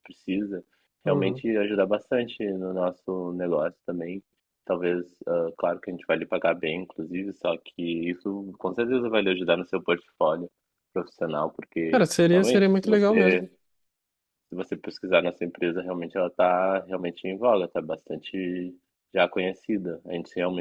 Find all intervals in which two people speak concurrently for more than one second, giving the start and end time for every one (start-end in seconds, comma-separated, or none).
11.9-13.5